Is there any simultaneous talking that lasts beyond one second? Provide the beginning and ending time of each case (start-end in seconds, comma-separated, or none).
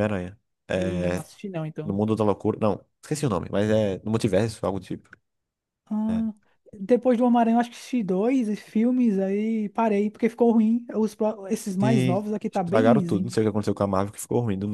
11.8-13.4